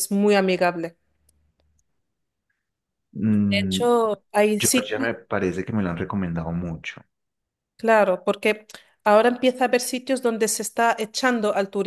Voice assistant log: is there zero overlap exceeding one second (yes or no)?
yes